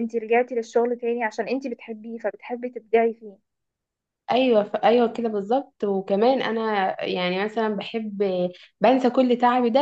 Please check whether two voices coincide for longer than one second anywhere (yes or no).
no